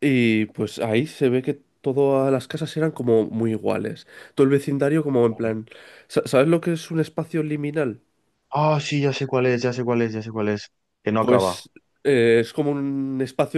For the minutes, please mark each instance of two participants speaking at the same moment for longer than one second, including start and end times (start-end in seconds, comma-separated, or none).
none